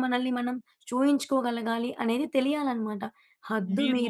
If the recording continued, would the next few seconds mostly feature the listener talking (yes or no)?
no